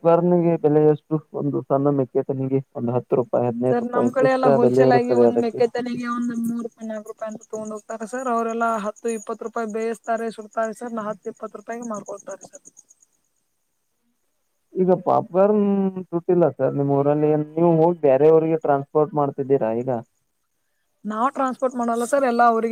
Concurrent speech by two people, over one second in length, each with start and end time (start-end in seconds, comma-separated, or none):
3.7-5.6